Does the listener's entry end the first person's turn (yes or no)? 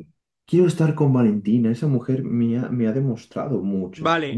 yes